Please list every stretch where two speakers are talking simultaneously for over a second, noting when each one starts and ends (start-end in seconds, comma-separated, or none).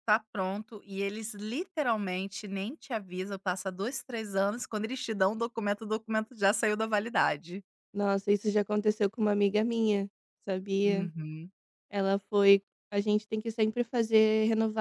none